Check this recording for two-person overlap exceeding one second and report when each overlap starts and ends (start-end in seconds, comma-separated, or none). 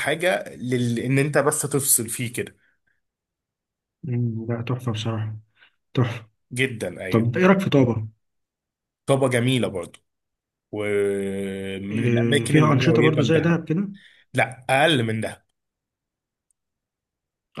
11.9-13.6